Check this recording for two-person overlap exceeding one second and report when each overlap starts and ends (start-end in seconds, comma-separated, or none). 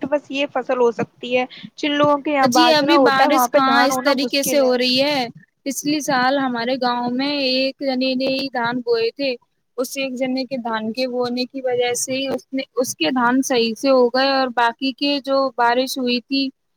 2.5-4.6